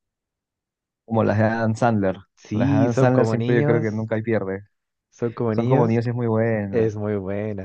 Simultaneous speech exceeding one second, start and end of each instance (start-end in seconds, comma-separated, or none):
2.5-4.1